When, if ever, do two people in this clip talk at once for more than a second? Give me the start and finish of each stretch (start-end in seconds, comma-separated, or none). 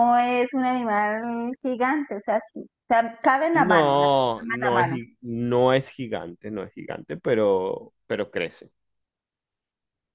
3.5-5.0